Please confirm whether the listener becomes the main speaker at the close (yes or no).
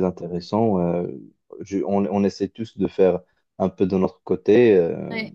no